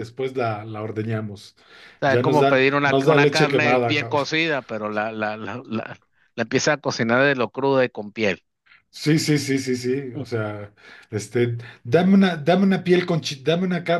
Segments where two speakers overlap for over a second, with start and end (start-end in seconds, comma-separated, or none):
2.0-4.2